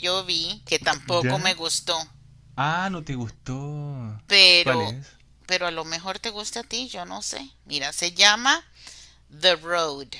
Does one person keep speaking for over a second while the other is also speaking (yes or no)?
no